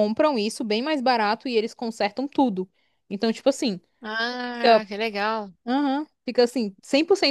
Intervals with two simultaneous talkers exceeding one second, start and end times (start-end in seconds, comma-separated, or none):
none